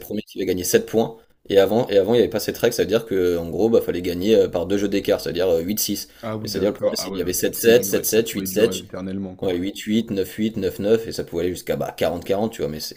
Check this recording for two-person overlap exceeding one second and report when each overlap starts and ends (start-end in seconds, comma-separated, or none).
6.2-8.7